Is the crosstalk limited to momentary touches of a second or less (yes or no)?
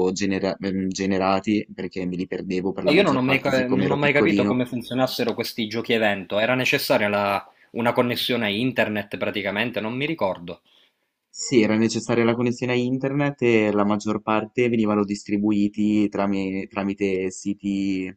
no